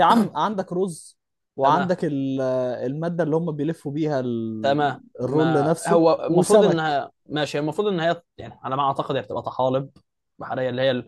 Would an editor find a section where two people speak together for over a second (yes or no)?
yes